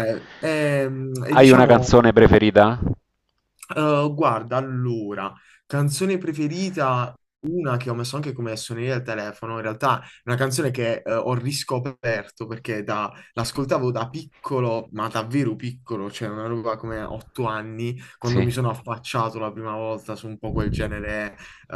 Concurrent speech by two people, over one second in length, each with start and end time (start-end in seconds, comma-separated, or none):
none